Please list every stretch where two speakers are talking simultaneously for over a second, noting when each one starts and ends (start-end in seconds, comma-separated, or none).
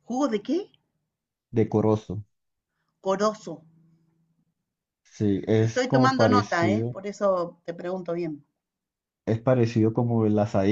5.6-7.0